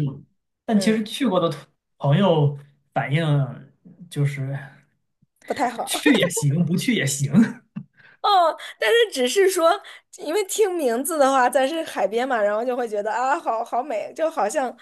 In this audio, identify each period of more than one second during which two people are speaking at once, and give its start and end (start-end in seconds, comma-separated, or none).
none